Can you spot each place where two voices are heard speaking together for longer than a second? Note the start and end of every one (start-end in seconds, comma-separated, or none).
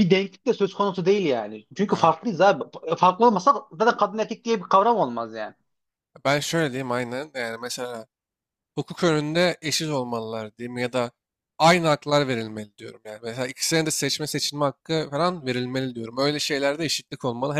none